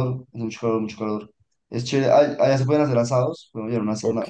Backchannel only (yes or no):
yes